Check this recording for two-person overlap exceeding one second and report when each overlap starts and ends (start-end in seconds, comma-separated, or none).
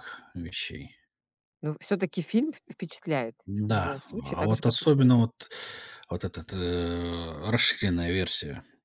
3.5-5.2